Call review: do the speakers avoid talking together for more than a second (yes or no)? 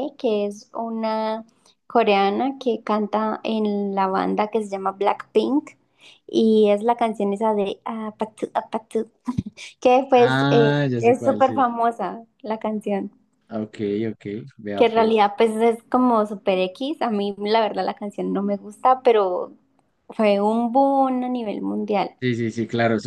no